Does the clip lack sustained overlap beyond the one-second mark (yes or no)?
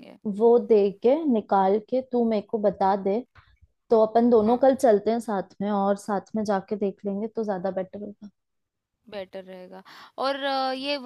yes